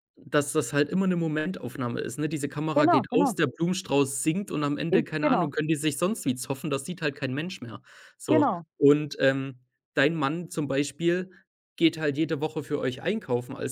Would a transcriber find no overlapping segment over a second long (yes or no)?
yes